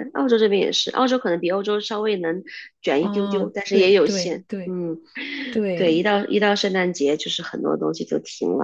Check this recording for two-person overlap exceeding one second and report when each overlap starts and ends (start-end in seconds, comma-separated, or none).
3.0-4.8